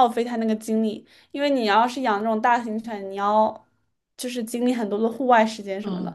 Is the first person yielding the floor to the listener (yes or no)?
yes